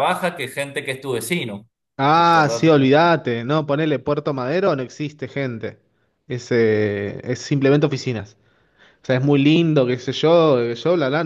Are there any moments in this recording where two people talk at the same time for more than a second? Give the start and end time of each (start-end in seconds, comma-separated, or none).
none